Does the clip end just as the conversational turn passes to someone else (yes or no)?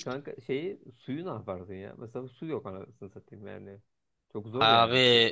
yes